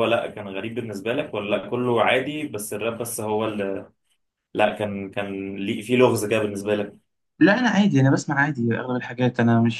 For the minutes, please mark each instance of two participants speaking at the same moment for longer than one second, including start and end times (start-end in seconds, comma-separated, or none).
none